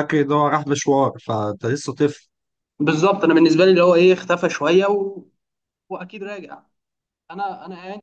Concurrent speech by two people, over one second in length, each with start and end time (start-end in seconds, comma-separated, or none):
none